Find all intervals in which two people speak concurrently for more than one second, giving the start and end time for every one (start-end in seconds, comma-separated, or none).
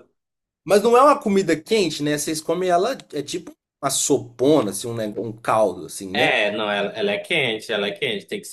none